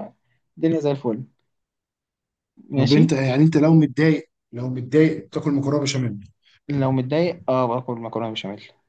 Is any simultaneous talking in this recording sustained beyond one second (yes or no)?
no